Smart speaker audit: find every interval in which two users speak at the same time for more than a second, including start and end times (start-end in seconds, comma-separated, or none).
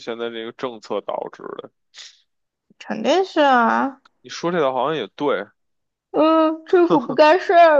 none